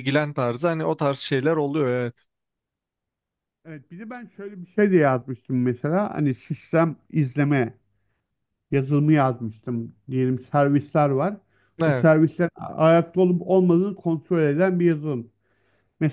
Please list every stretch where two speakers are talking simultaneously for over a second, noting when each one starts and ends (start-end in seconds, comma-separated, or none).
none